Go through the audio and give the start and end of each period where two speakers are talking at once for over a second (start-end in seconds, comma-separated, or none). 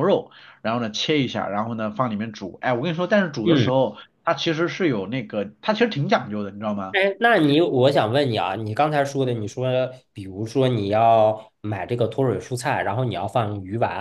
none